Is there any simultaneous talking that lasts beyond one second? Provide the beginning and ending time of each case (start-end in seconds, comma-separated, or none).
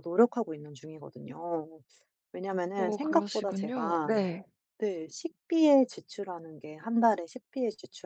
2.8-4.2